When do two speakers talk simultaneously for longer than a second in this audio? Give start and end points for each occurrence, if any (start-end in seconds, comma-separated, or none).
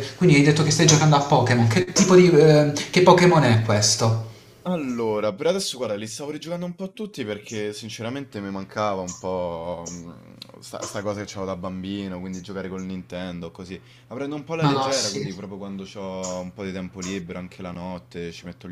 none